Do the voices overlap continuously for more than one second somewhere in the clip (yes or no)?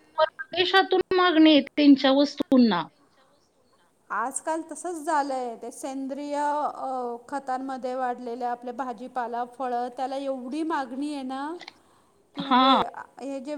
no